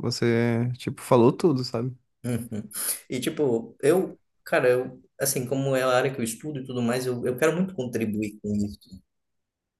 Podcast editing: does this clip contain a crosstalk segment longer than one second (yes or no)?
no